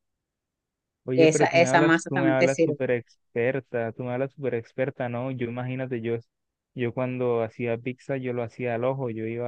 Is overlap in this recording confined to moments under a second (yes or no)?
no